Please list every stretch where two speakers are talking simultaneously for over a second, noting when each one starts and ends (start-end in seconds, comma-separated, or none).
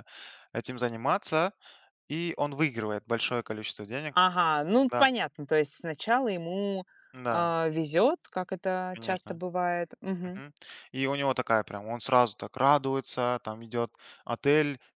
none